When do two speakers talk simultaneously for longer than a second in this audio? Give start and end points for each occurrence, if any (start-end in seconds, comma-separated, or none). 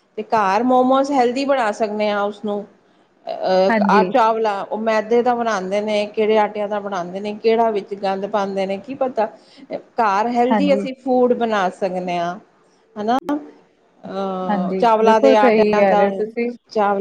14.5-16.1